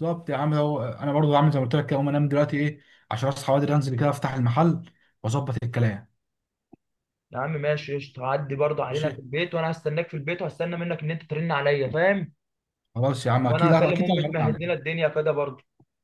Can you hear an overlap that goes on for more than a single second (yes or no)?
yes